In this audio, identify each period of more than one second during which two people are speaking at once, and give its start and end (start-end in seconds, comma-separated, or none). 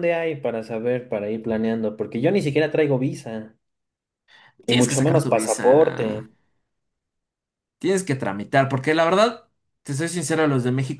4.7-6.3